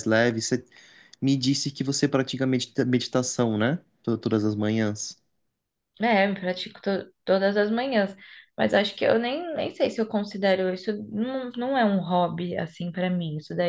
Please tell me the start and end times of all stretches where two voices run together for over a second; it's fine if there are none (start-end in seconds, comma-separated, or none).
none